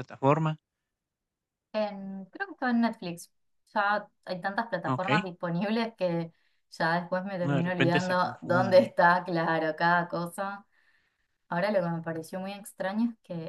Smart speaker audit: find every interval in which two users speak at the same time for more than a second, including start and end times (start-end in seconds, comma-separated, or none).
7.4-8.9